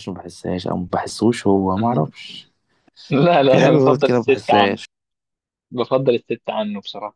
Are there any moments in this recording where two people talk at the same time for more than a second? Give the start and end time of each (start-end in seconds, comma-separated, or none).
3.5-4.8